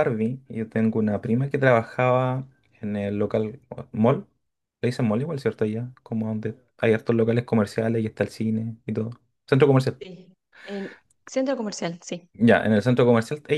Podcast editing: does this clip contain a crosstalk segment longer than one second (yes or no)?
no